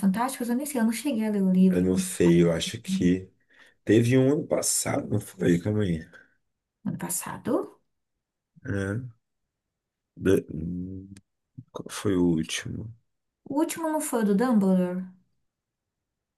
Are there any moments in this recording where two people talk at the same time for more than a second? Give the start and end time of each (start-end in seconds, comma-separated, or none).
none